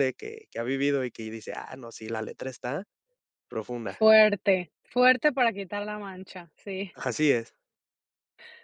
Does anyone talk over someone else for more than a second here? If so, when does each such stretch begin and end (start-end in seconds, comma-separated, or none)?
none